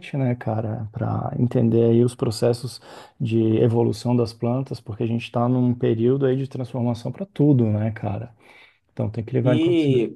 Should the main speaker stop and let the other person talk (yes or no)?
yes